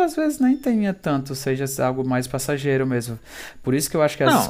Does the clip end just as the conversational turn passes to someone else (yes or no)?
no